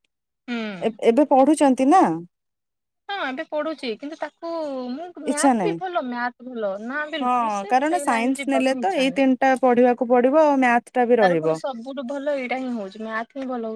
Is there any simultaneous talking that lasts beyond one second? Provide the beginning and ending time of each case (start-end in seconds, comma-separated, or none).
7.2-9.2